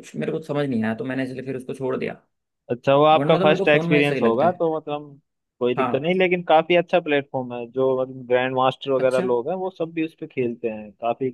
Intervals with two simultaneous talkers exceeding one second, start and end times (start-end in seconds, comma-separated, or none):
3.1-4.6